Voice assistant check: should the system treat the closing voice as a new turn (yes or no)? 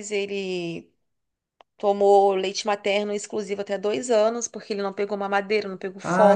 yes